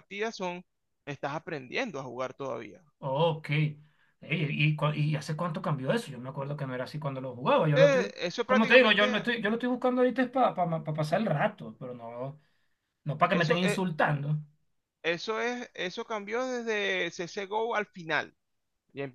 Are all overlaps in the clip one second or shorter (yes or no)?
no